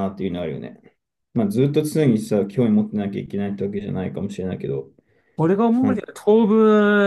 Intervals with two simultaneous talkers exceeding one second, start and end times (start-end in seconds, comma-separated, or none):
none